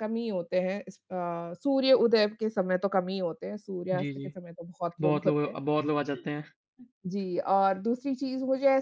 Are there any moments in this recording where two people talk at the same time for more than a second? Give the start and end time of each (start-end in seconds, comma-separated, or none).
none